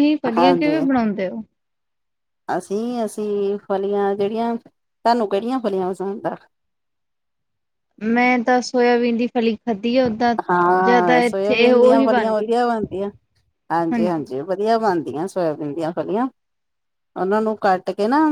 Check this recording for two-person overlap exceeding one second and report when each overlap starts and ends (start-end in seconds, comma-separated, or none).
10.8-12.5